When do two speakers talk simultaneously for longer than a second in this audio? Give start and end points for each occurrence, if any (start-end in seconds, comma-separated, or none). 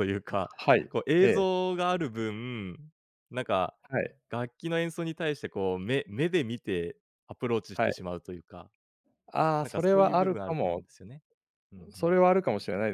9.6-10.8